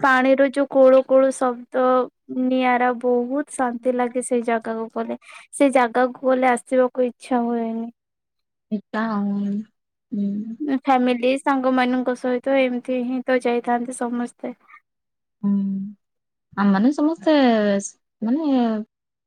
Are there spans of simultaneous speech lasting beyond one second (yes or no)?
no